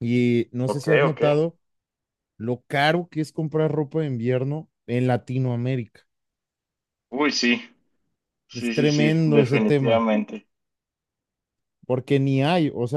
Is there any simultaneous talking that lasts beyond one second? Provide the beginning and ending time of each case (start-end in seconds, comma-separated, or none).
8.5-10.1